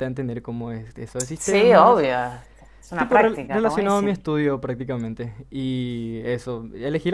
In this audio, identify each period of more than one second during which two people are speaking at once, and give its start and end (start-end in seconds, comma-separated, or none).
3.0-4.2